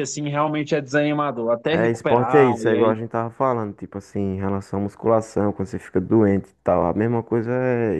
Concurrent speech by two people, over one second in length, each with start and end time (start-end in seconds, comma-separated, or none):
1.7-3.0